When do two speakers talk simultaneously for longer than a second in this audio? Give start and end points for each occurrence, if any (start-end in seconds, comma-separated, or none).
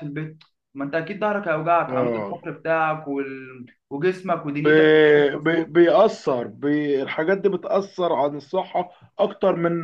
none